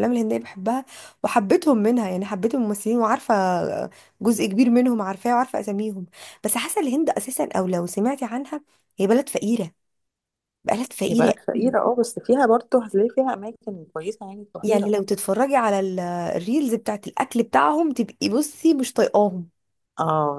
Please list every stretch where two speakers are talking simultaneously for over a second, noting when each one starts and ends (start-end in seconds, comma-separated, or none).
none